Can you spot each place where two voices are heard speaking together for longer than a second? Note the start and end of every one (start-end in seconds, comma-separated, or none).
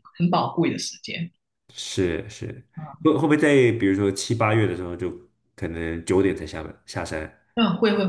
none